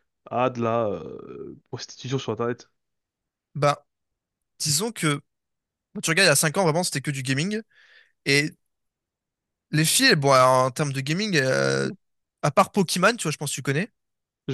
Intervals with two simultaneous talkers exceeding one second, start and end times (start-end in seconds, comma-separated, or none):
none